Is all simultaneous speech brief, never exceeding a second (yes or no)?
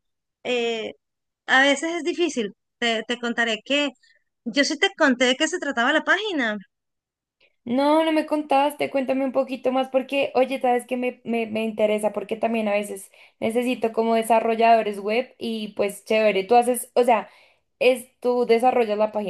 yes